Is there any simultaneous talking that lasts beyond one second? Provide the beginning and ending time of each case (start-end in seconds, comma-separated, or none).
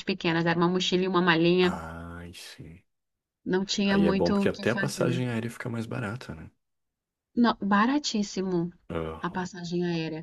3.9-5.2